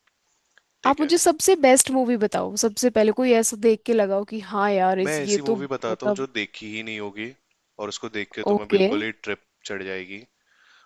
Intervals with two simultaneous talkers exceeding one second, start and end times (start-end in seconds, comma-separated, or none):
5.0-6.2